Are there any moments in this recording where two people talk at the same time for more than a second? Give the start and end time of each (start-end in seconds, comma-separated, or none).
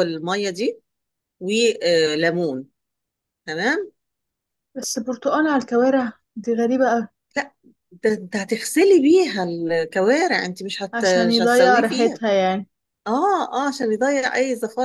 10.9-12.2